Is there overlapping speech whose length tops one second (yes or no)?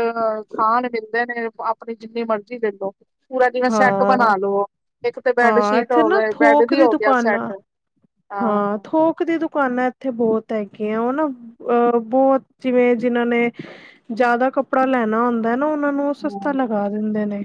yes